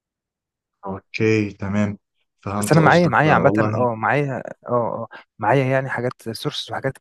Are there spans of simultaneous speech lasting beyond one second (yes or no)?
yes